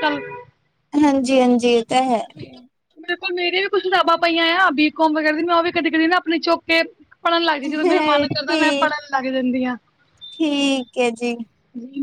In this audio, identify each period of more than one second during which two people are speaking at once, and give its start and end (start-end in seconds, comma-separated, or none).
7.7-8.9